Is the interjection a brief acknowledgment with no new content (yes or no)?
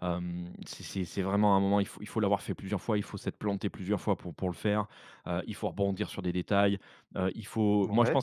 yes